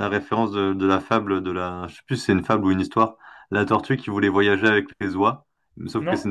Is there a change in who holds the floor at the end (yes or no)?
no